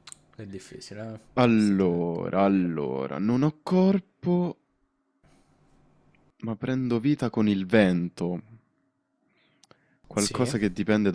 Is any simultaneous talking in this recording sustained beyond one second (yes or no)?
yes